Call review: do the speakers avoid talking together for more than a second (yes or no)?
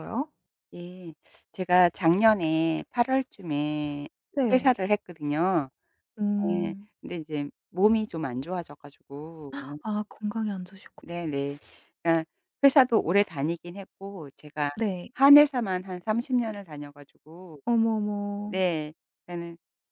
yes